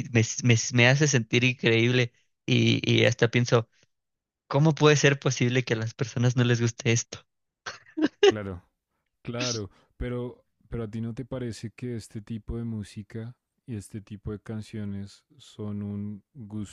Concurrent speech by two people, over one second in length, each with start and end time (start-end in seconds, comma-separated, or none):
none